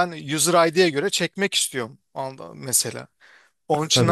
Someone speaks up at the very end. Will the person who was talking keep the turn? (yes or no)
no